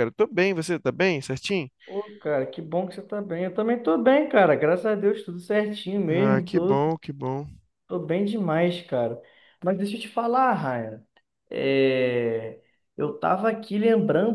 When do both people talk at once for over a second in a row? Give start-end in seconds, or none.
none